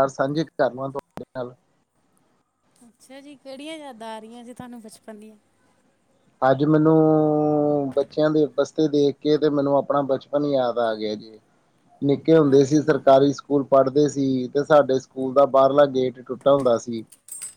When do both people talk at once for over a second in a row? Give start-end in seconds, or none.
none